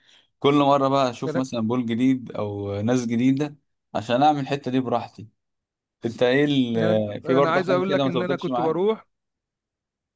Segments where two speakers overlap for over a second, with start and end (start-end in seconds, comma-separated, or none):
6.8-8.8